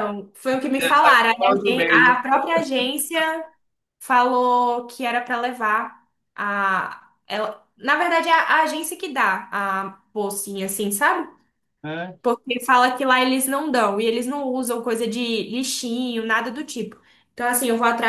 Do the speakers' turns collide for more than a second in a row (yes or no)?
yes